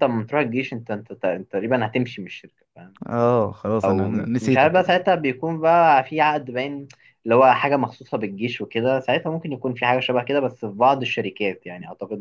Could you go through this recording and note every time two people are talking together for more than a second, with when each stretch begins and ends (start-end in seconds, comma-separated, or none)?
3.8-5.1